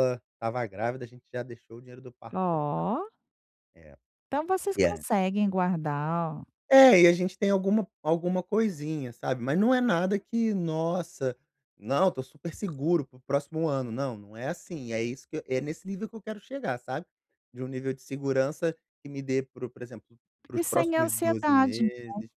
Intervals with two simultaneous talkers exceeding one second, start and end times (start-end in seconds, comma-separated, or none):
20.5-21.8